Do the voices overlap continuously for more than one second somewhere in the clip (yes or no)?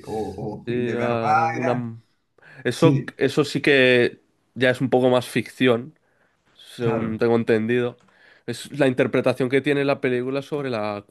yes